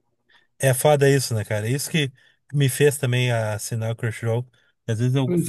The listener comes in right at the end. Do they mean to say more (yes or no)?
no